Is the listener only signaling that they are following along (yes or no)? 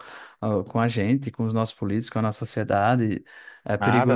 no